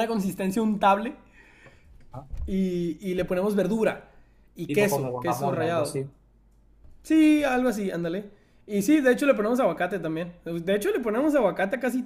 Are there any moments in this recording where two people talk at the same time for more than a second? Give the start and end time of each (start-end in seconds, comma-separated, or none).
4.7-6.0